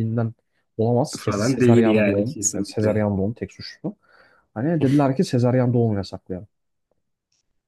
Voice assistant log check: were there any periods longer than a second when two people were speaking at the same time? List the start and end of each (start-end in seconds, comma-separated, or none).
1.2-3.1